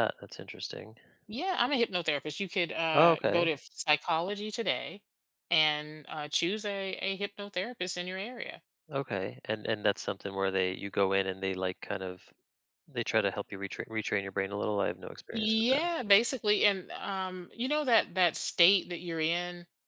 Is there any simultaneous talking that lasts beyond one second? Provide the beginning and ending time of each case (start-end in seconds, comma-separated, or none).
none